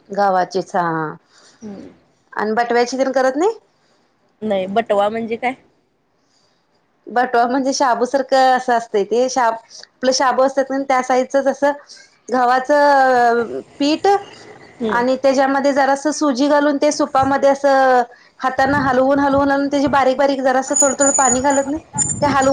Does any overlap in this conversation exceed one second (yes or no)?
no